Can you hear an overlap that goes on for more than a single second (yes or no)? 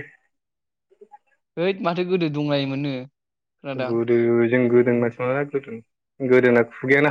no